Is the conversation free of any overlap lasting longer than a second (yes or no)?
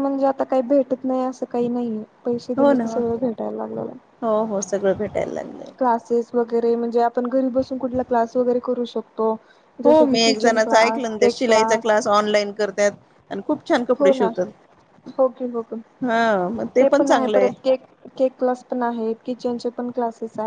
no